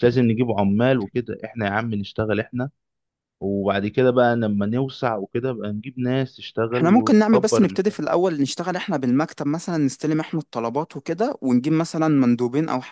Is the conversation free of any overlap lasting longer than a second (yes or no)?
no